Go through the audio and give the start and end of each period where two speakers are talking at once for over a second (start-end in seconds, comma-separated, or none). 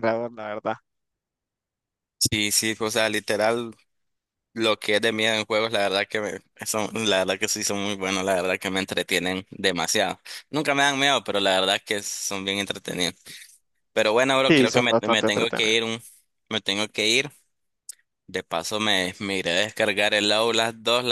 14.5-15.7